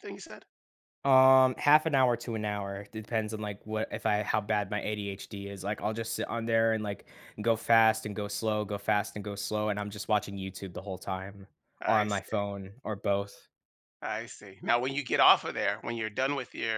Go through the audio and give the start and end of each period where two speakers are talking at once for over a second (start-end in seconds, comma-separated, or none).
none